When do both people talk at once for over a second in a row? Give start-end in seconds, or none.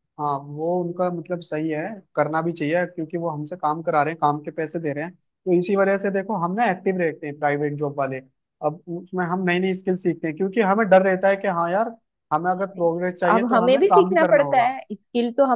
13.3-14.8